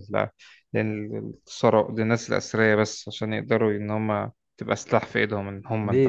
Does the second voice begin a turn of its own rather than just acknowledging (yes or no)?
yes